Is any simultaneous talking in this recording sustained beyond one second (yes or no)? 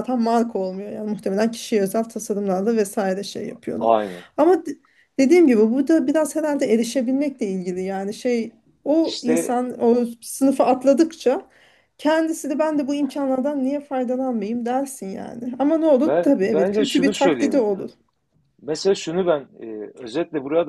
yes